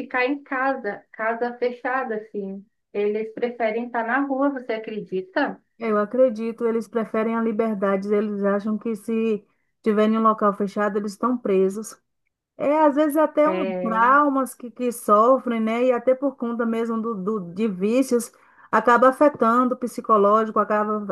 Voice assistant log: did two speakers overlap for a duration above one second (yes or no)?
no